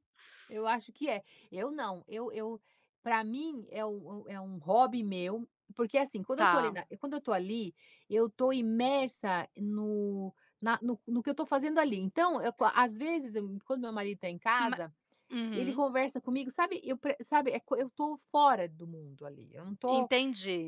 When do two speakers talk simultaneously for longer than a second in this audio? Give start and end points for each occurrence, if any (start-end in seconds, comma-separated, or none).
none